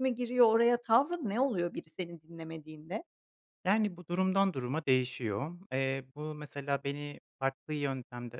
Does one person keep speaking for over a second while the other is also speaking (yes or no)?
no